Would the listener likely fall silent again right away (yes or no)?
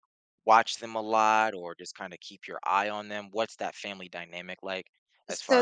no